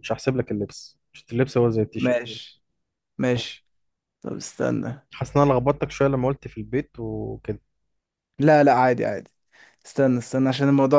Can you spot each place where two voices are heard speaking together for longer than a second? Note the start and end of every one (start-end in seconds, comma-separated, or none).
none